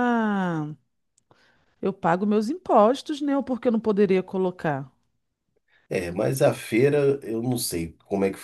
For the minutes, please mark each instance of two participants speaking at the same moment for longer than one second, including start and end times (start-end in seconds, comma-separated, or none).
none